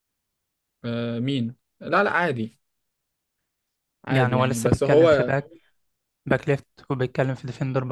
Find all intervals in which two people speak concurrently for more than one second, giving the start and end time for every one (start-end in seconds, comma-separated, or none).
4.1-5.4